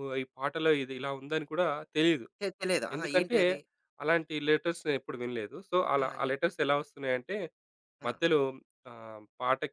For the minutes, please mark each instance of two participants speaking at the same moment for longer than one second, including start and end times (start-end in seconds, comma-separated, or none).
none